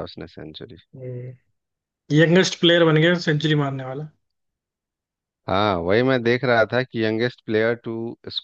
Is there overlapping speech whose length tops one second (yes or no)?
no